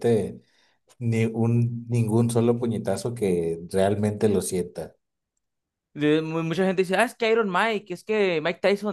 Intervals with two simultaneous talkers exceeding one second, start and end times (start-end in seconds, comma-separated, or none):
none